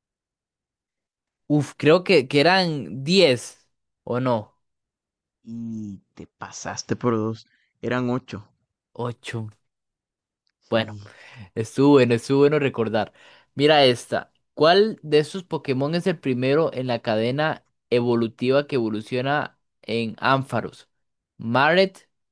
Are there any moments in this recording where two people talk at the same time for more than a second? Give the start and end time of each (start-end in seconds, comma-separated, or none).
none